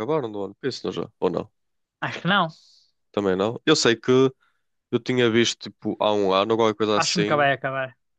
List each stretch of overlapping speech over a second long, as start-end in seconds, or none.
none